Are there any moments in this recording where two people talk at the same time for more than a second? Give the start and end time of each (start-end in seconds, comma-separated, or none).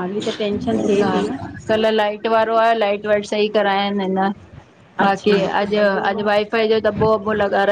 none